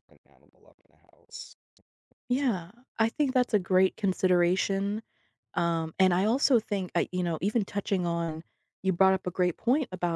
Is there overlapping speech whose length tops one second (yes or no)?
no